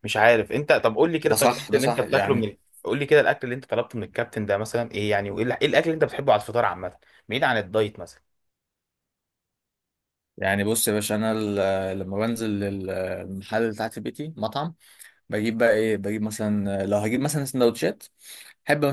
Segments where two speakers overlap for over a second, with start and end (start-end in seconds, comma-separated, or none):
1.2-2.5